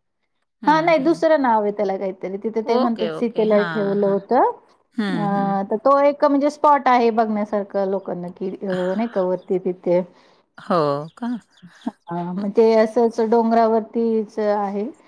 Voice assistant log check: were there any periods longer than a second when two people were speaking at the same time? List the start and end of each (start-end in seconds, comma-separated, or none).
2.7-4.2